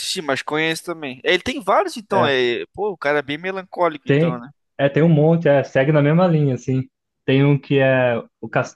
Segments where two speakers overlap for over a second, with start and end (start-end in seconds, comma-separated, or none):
none